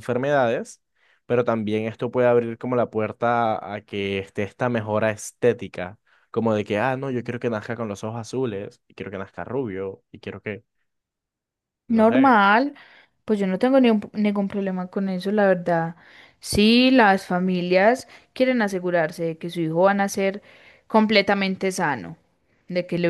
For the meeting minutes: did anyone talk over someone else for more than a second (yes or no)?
no